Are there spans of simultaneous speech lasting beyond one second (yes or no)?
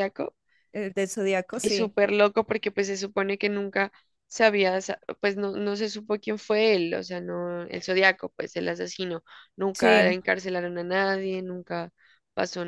no